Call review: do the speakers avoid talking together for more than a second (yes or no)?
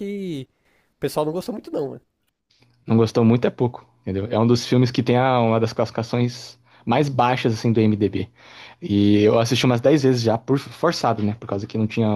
yes